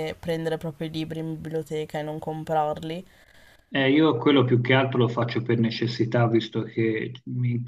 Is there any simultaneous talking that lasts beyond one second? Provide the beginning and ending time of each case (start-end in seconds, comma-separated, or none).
none